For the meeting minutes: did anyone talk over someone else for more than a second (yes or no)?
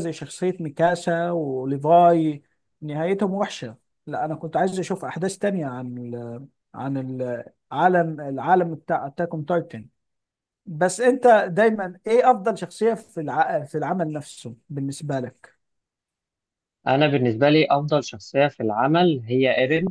no